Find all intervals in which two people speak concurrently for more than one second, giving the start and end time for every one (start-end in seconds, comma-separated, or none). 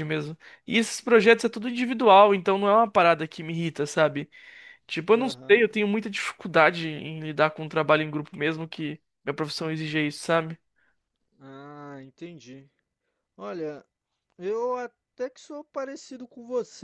none